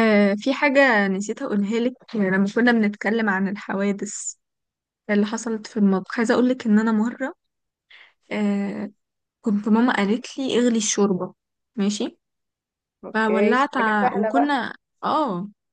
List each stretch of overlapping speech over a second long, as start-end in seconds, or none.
13.1-14.6